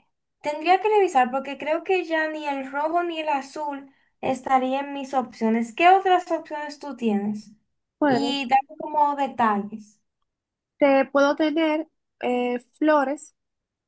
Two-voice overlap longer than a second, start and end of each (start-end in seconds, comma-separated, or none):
none